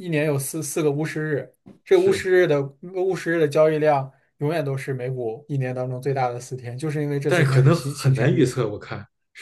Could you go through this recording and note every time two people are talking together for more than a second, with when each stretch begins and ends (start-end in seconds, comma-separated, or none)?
7.2-8.5